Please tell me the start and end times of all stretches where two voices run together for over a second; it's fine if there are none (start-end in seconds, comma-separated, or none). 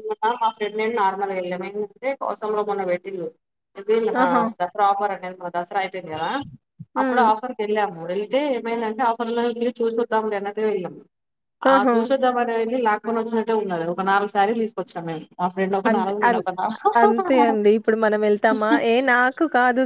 none